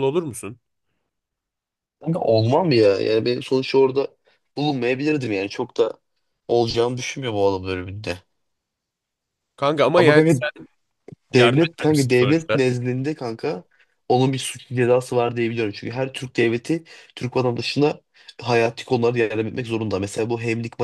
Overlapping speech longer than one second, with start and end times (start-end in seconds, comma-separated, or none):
11.3-12.6